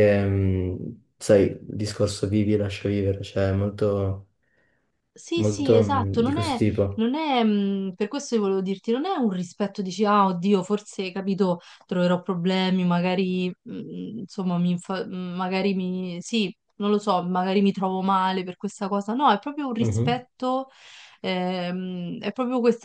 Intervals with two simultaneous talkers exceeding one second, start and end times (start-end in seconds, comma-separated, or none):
5.3-7.0